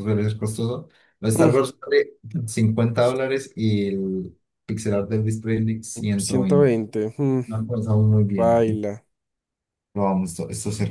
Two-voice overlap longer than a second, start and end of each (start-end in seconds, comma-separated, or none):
none